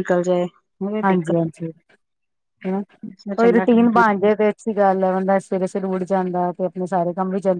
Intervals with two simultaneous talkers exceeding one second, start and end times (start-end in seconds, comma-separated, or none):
2.9-4.3